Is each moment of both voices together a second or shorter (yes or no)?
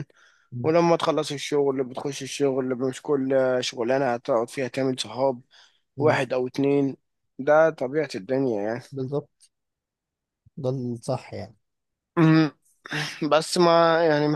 yes